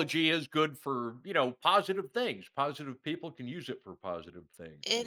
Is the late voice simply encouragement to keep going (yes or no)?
no